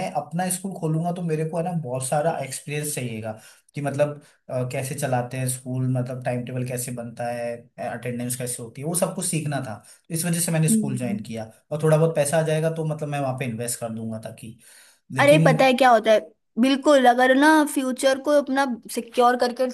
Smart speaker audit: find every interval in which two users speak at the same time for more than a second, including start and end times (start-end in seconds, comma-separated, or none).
none